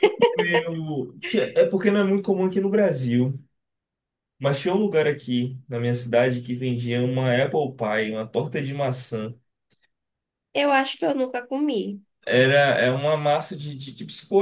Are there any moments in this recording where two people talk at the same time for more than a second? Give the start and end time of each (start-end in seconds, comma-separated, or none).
none